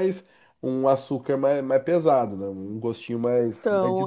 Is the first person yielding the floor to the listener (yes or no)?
yes